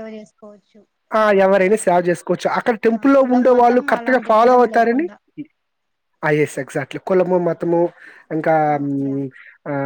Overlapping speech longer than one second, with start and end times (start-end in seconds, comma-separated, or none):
3.0-5.1